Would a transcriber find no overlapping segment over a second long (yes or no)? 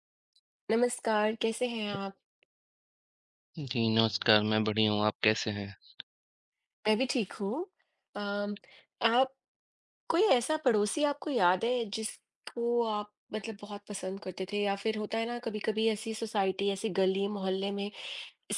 yes